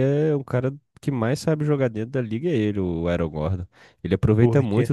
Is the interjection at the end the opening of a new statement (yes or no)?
no